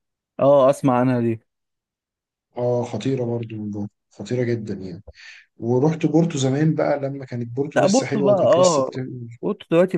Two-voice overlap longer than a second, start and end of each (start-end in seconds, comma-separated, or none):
7.8-9.0